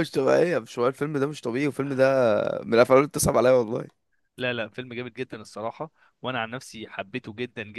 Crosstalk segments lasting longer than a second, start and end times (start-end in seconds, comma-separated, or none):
none